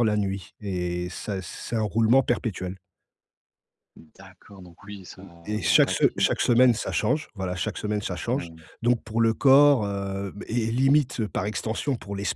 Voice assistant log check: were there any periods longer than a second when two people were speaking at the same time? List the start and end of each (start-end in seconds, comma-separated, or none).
4.8-6.9